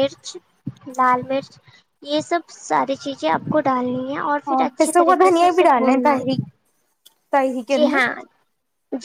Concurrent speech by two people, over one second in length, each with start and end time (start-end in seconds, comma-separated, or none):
4.5-6.4